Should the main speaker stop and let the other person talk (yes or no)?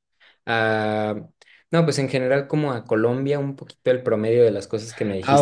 yes